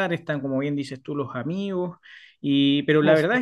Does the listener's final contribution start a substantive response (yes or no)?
no